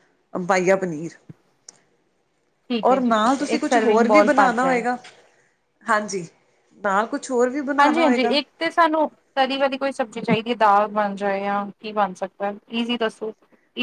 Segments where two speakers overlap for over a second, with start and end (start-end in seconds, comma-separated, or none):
2.9-4.8